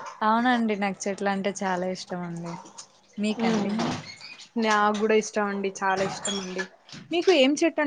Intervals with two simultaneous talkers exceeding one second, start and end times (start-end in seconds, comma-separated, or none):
none